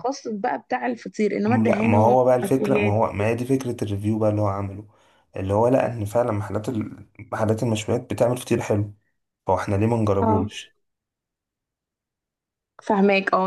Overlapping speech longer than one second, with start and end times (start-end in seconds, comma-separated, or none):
1.5-3.0